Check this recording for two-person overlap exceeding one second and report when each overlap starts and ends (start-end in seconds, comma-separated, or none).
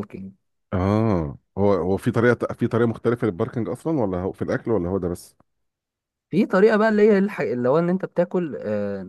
none